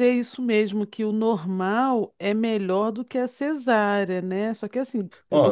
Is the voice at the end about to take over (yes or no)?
yes